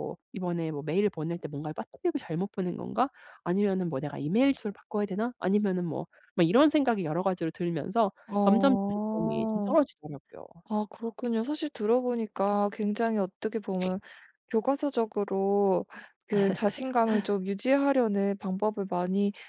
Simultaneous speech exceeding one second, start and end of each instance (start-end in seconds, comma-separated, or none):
8.3-9.8